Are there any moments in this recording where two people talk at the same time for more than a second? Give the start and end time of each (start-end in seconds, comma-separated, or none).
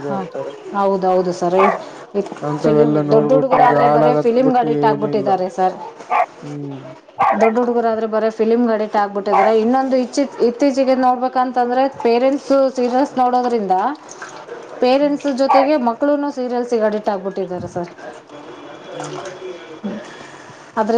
2.6-5.3